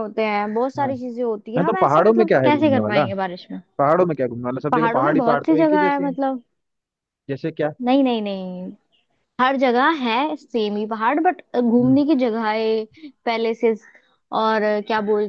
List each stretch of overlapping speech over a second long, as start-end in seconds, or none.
1.6-3.0, 4.7-6.2